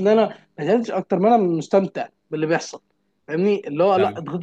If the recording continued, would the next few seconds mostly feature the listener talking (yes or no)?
no